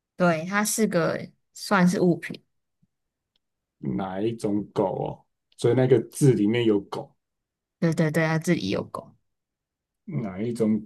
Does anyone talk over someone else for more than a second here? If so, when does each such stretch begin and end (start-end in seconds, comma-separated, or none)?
none